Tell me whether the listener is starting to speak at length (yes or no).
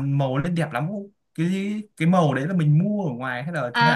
yes